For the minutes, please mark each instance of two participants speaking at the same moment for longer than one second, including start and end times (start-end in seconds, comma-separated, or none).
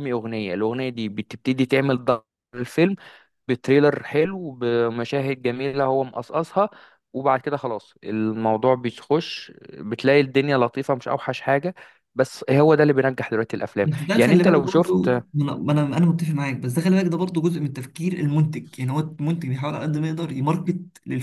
13.8-15.2